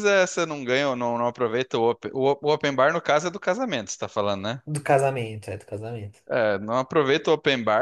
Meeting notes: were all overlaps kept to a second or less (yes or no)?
yes